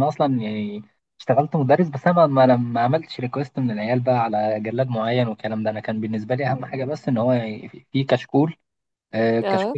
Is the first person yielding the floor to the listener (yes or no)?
no